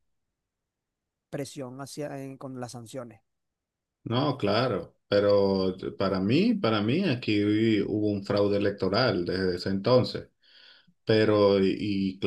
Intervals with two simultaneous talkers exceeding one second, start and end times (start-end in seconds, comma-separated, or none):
none